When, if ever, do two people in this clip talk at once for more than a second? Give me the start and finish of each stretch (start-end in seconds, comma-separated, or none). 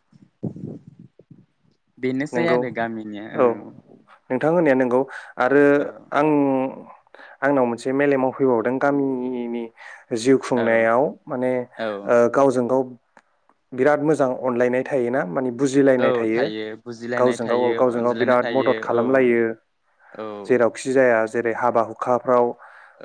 17.2-19.4